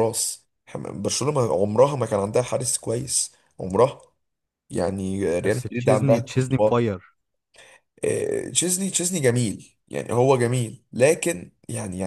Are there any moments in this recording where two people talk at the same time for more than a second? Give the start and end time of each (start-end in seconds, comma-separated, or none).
5.4-6.9